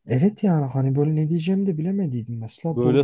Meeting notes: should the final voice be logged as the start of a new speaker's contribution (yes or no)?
yes